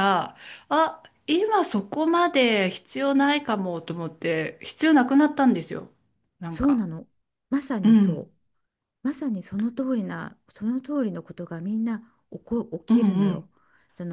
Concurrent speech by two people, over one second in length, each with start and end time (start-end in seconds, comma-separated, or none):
none